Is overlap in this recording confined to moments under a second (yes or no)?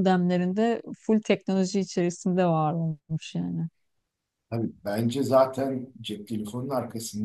yes